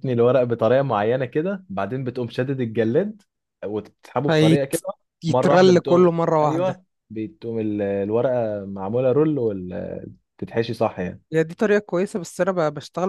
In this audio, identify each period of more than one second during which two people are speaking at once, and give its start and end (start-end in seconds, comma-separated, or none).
5.3-6.8